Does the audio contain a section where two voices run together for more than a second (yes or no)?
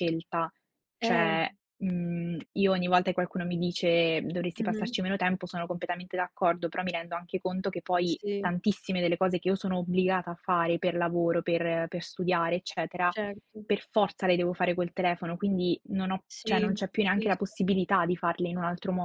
yes